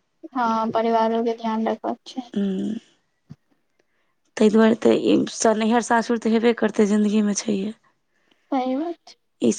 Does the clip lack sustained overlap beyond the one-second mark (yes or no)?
yes